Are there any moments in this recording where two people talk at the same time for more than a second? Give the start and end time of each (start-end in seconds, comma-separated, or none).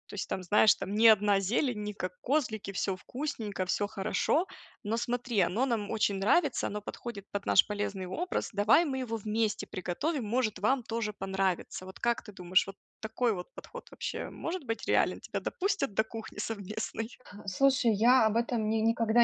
none